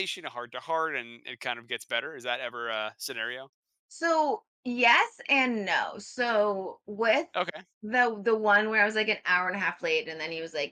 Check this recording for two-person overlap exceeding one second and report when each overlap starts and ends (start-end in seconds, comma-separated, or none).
none